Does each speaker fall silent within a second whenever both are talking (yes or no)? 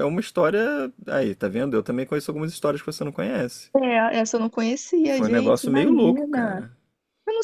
no